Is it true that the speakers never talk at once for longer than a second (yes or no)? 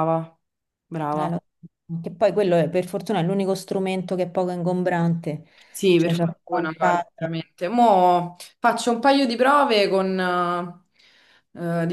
no